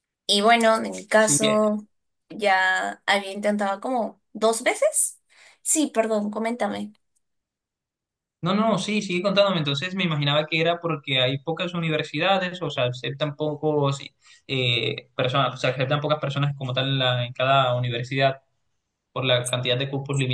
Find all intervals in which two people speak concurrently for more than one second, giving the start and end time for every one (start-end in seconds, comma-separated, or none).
none